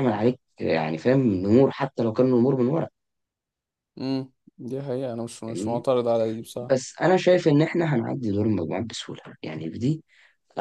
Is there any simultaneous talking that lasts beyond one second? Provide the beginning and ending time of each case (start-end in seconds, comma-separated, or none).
none